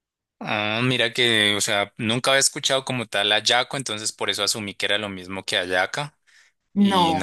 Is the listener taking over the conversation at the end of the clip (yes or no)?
no